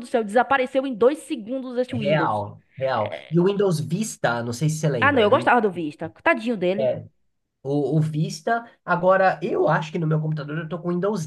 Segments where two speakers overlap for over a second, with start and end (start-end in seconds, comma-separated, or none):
none